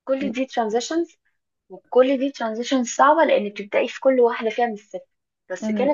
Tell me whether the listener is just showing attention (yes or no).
yes